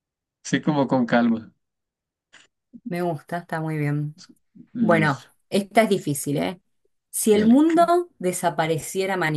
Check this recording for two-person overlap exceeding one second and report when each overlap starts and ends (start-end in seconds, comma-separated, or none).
none